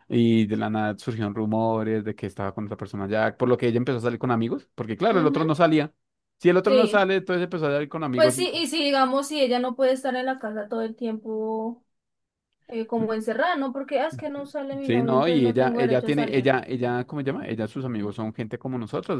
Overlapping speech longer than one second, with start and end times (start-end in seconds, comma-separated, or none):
14.8-16.5